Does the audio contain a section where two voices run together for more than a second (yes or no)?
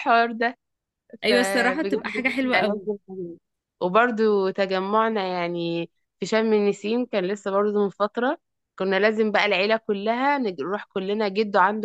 yes